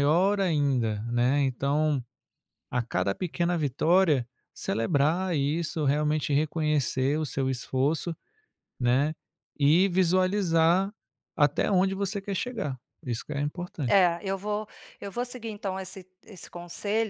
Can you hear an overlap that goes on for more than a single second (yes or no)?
no